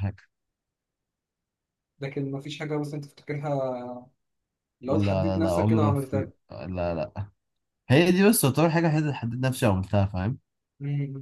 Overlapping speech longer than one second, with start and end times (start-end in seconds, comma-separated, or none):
4.8-6.3